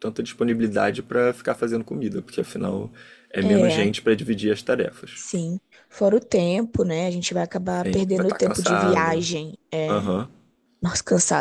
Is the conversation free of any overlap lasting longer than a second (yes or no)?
no